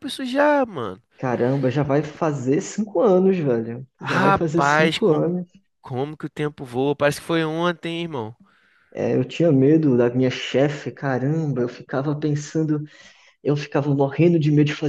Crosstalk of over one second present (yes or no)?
yes